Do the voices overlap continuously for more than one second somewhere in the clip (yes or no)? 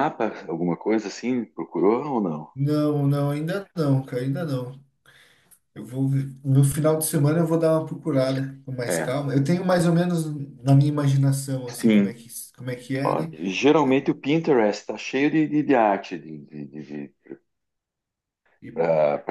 no